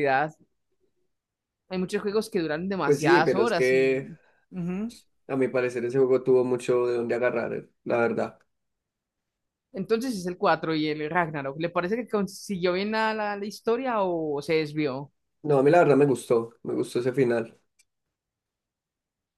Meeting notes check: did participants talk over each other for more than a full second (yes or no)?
yes